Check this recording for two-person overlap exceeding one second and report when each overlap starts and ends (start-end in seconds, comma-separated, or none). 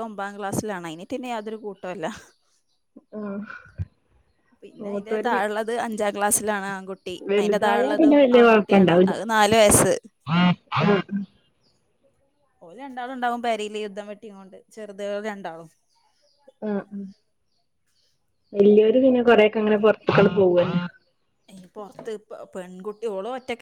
7.3-9.1